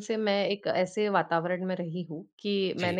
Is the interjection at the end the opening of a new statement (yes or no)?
no